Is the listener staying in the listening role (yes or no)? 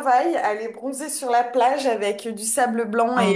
yes